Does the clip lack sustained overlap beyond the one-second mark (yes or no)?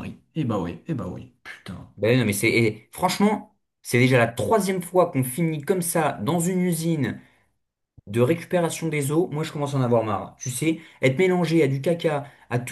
yes